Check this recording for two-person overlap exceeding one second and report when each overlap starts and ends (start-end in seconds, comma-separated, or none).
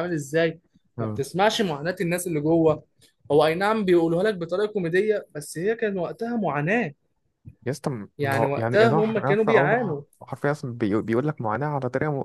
8.2-10.0